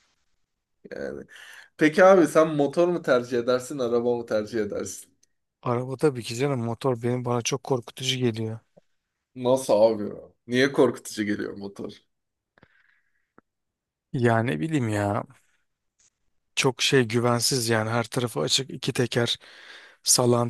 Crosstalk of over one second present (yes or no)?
no